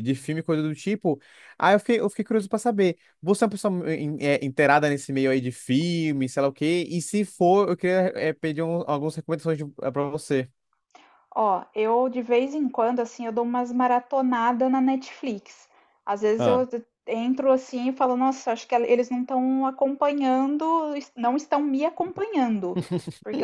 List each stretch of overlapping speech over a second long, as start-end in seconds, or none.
none